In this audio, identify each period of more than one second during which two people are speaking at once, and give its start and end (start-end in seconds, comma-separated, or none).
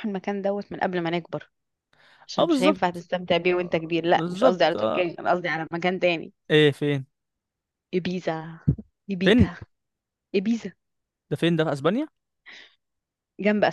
2.4-5.0